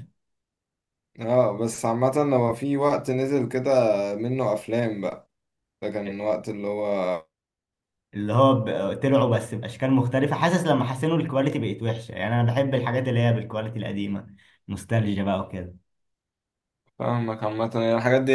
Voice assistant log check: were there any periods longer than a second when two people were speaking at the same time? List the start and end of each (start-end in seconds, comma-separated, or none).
none